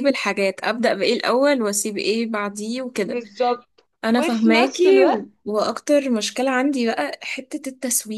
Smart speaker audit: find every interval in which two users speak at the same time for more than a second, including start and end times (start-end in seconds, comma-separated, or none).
4.0-5.3